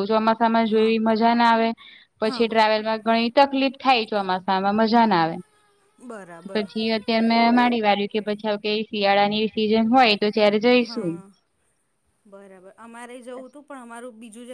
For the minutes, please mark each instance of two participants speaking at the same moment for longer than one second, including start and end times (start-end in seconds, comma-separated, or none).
none